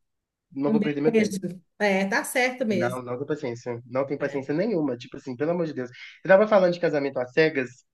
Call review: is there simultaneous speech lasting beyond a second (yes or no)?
no